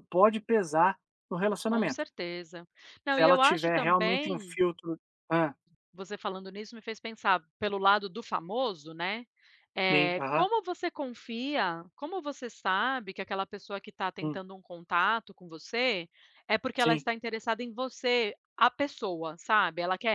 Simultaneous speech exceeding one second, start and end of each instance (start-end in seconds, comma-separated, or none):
3.1-4.6